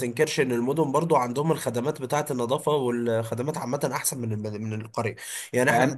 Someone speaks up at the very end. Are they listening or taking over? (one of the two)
listening